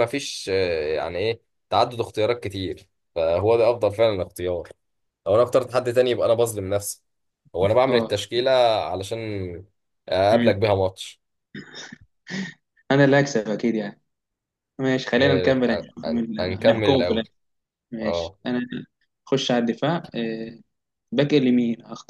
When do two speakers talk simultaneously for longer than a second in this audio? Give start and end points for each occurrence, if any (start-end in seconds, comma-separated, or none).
15.2-17.3